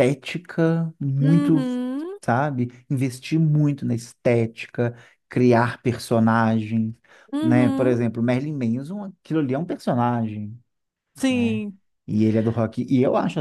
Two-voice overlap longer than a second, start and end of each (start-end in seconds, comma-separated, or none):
none